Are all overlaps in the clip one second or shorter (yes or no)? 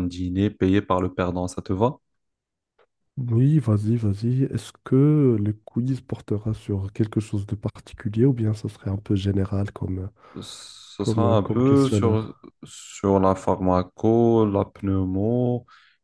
no